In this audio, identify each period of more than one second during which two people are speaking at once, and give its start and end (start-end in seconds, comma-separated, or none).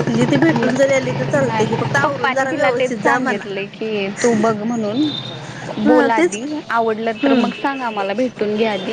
0.5-3.5